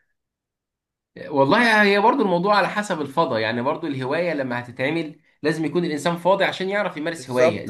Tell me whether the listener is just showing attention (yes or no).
no